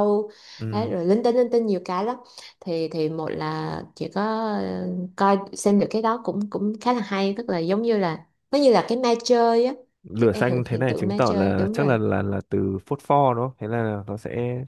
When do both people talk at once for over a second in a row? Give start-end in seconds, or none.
10.2-12.0